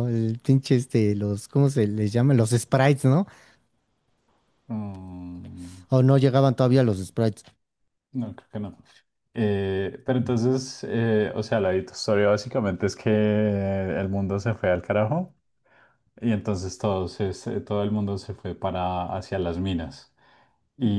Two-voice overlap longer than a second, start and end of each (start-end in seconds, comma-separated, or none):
none